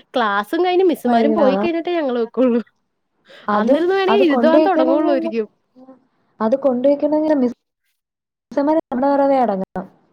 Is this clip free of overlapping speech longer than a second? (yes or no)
no